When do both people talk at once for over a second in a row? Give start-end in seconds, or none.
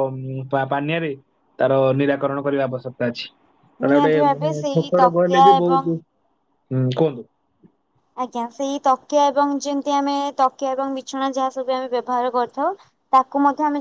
3.9-5.8